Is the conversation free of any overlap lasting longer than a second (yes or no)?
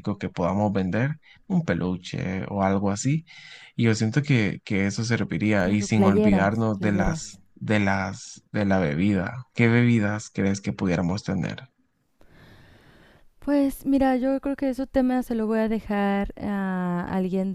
no